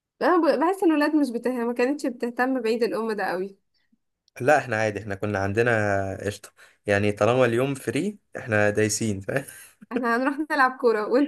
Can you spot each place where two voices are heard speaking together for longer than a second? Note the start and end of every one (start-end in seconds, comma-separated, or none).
none